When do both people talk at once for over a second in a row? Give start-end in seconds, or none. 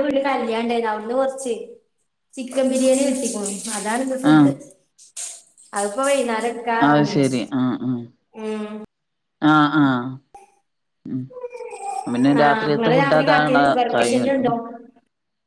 12.4-14.4